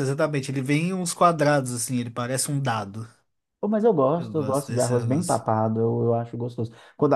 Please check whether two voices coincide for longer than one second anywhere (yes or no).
yes